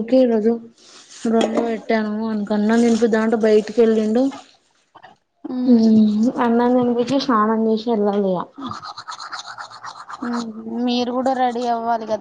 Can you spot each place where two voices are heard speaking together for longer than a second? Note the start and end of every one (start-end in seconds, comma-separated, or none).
none